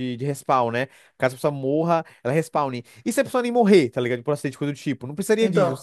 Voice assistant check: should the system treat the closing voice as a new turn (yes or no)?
no